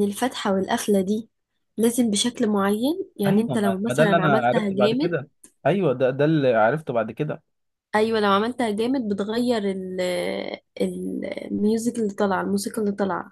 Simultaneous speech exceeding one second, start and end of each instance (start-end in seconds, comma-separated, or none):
3.3-5.2